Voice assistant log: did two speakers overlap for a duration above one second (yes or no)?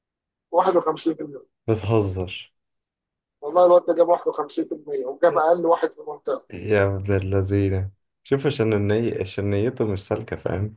no